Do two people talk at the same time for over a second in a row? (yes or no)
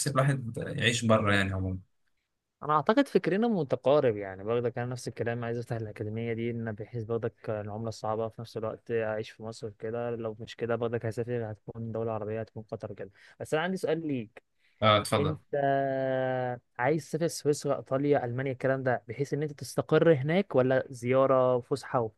no